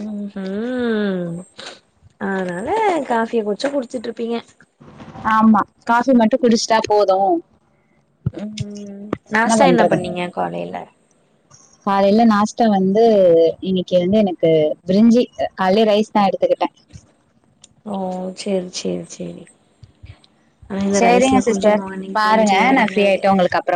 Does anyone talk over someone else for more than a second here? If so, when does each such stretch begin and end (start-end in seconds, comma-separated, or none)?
21.0-23.2